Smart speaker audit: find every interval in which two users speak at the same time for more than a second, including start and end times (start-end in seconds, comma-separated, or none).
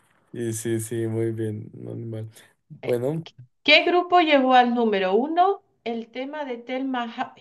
none